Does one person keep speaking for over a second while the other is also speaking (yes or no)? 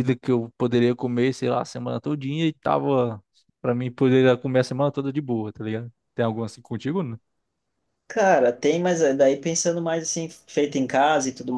no